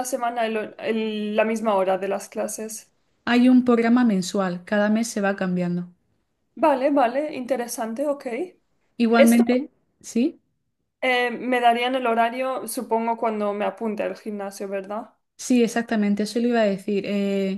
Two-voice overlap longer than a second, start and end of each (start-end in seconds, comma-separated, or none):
none